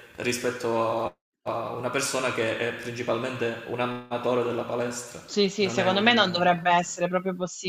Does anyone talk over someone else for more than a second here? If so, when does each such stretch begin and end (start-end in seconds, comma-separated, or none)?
5.6-6.8